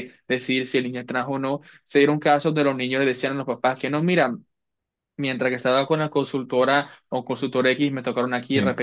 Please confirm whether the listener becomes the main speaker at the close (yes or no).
no